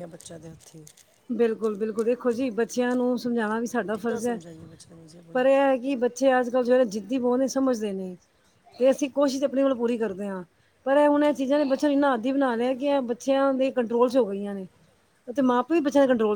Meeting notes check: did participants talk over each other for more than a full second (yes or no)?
no